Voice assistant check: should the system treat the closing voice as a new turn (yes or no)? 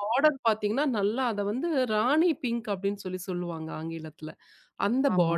no